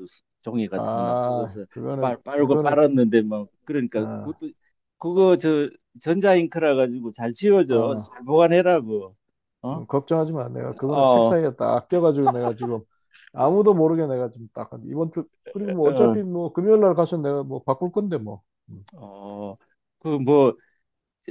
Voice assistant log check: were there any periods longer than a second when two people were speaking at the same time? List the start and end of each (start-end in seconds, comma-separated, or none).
0.7-2.7